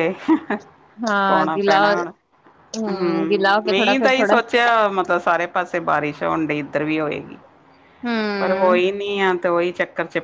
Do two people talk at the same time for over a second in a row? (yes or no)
yes